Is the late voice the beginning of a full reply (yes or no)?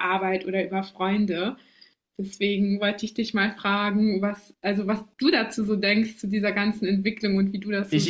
yes